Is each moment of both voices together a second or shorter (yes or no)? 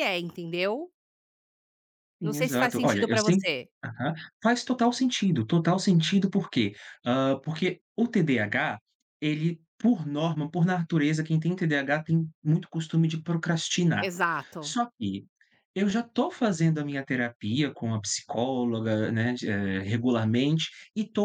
no